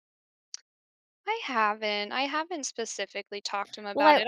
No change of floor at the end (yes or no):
yes